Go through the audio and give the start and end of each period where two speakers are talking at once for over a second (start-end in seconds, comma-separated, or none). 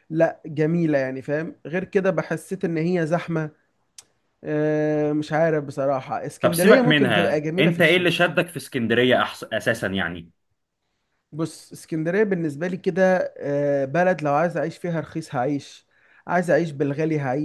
6.4-8.2